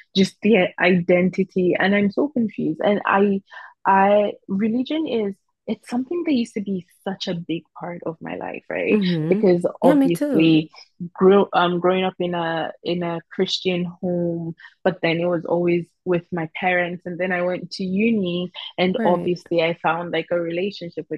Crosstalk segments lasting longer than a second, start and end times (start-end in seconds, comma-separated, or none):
8.9-10.7